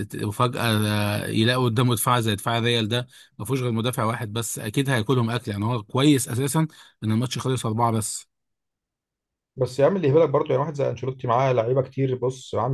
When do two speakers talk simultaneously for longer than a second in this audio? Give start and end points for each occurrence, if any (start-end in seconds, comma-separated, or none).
none